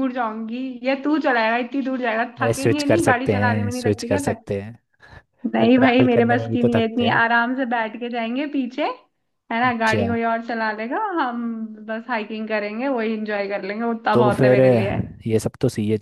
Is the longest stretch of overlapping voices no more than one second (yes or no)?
no